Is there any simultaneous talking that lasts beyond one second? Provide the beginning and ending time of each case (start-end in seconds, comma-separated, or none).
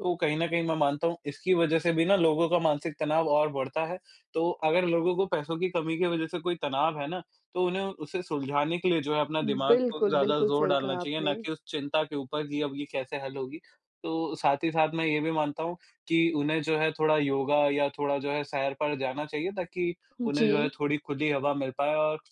9.7-11.4